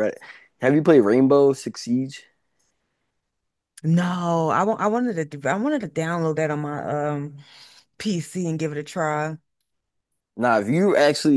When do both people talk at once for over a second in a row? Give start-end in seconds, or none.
none